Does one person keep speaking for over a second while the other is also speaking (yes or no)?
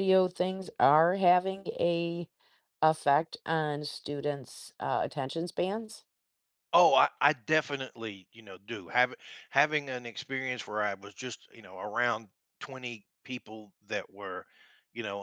no